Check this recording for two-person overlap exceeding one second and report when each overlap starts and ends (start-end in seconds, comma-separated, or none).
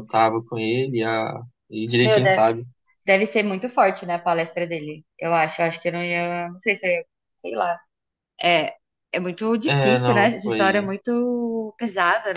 9.7-10.9